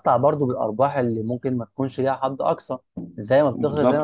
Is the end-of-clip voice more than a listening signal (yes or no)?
yes